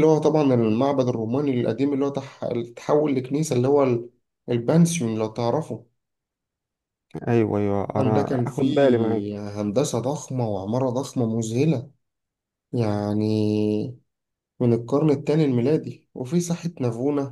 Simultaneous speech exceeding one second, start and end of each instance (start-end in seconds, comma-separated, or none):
7.9-9.2